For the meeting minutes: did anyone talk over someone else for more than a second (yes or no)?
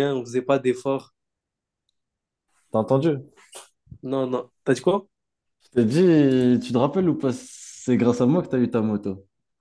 no